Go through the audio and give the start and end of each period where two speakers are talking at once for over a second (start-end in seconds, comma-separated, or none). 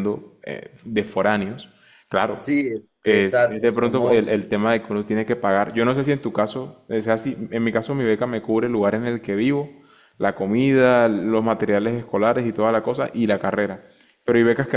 3.0-4.4